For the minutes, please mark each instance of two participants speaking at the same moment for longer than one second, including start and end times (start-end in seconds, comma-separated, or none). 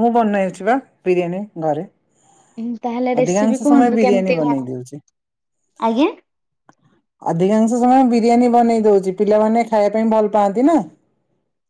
3.2-4.7